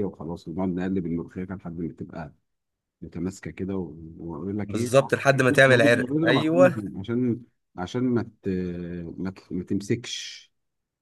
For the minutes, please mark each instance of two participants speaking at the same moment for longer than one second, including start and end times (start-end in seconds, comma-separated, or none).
5.7-6.9